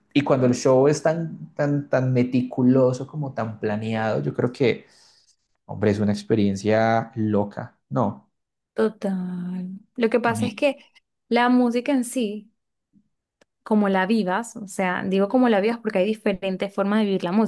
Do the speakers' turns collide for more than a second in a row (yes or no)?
no